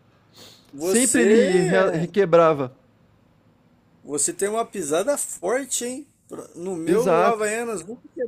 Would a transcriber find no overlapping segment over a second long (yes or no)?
no